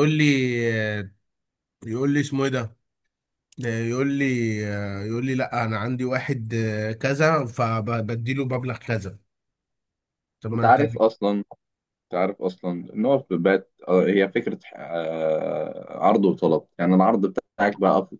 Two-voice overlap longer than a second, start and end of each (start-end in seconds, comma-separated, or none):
none